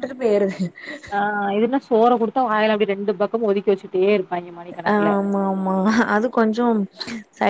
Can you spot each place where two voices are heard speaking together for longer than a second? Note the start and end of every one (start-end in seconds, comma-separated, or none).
none